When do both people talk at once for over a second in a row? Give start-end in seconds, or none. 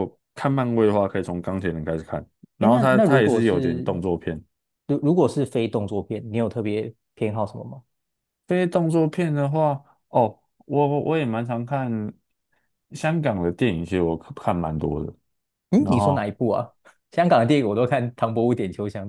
2.6-4.0